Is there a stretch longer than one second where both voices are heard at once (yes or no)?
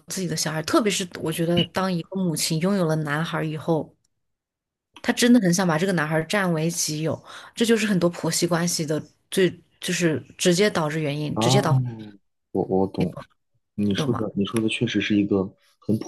no